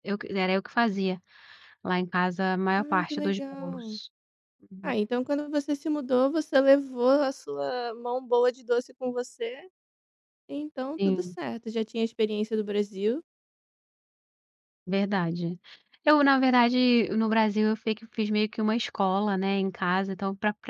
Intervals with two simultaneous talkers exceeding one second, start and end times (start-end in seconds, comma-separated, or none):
2.8-4.0